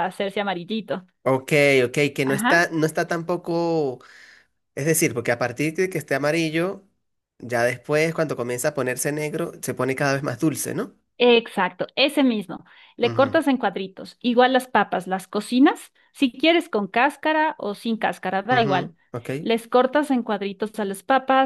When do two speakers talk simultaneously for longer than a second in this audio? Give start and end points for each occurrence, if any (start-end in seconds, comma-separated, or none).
none